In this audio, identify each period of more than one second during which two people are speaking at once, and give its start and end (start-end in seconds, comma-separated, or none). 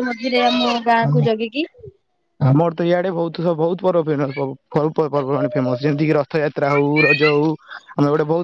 none